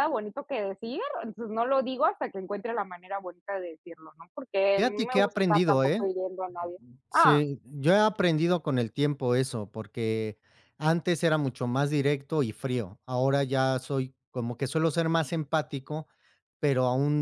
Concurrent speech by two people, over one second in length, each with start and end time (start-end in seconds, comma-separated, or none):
4.8-6.1